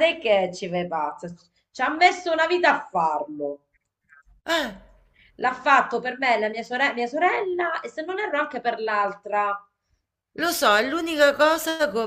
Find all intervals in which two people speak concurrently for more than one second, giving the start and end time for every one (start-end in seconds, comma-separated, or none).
none